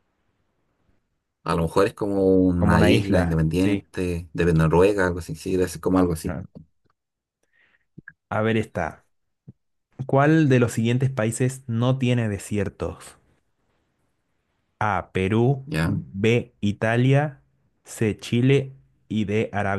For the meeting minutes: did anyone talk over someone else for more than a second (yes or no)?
yes